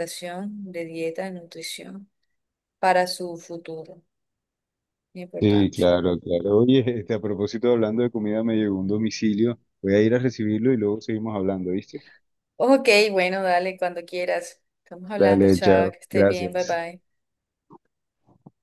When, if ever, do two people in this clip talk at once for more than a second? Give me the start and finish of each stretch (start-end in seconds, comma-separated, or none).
15.2-16.8